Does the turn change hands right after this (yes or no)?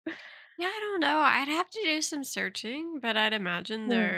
no